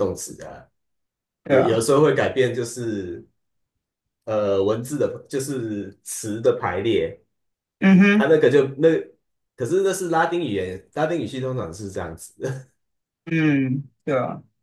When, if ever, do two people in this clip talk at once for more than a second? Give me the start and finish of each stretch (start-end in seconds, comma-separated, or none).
none